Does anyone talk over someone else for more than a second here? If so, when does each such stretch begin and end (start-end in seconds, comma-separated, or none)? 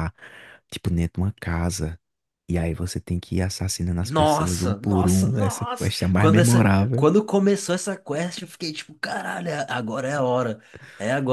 4.0-7.1